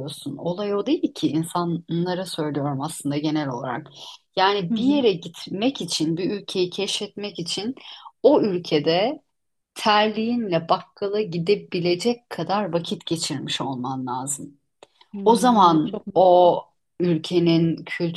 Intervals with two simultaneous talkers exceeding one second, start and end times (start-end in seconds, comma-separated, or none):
15.2-16.5